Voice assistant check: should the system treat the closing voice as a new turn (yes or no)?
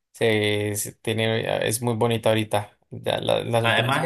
yes